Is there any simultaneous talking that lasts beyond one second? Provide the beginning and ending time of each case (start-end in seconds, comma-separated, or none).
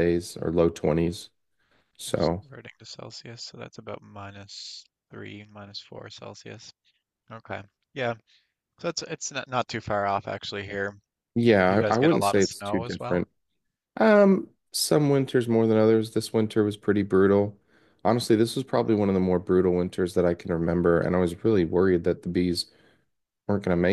11.7-13.2